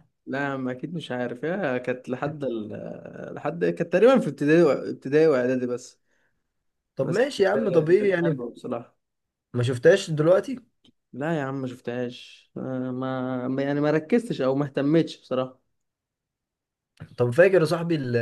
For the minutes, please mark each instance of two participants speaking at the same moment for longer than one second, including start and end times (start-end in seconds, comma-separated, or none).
7.0-8.4